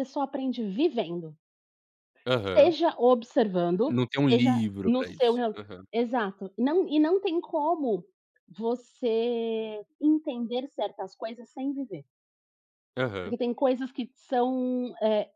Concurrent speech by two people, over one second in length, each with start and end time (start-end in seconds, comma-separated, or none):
3.9-5.6